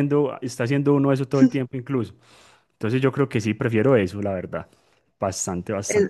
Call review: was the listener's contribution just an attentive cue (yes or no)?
no